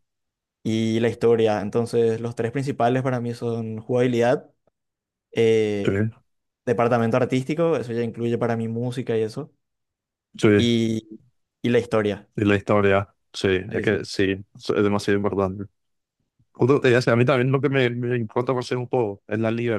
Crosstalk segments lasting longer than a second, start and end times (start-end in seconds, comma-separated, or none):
none